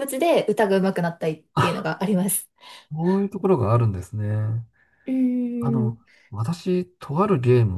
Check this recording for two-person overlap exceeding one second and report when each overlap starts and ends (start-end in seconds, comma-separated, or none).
none